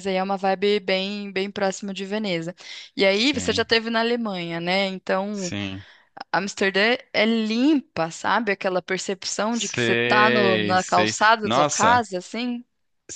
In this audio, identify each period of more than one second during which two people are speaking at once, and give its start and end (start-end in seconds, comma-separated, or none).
9.5-12.0